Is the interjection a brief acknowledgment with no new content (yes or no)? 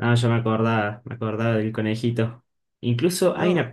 yes